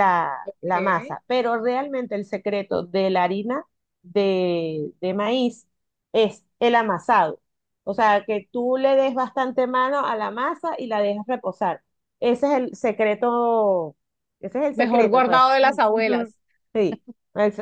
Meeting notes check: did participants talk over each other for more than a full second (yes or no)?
yes